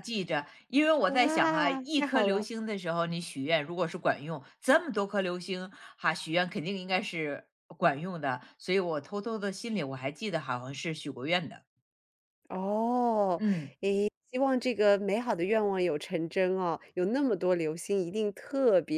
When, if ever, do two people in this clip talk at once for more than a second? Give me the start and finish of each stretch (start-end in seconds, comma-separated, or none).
1.1-2.5